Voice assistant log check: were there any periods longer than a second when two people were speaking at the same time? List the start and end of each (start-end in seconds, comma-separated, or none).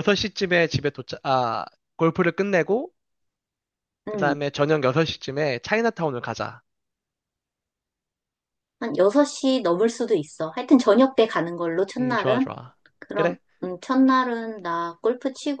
none